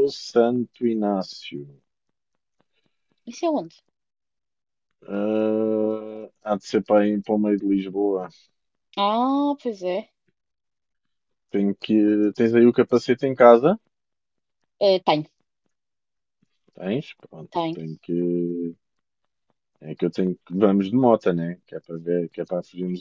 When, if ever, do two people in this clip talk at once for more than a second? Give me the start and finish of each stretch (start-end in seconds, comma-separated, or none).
none